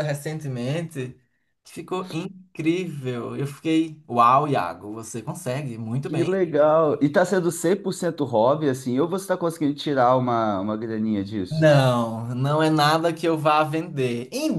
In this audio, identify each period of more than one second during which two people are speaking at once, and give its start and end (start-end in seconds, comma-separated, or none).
none